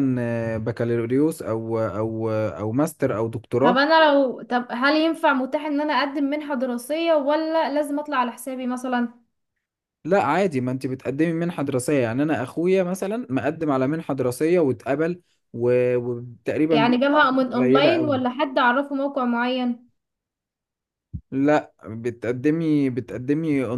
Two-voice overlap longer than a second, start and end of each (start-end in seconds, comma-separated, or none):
16.7-18.2